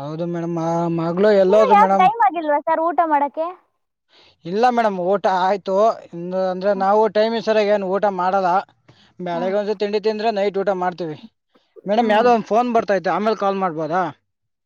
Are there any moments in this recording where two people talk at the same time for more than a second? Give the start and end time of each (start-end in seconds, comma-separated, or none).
none